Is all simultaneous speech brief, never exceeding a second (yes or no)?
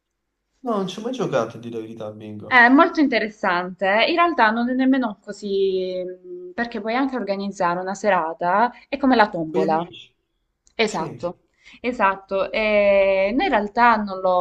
yes